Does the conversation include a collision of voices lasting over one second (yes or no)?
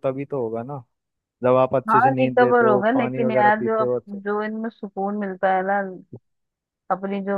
yes